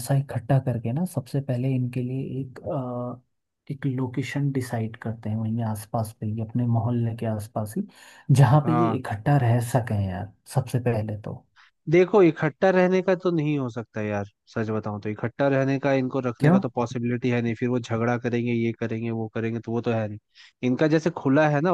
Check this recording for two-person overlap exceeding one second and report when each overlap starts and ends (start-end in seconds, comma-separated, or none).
none